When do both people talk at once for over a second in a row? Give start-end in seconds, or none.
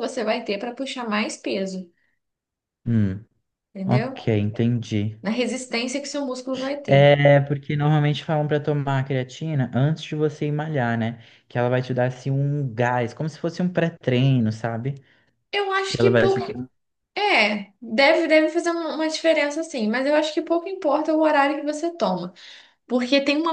none